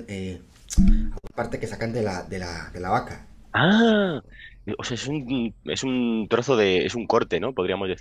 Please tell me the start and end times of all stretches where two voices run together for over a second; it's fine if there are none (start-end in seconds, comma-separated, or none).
none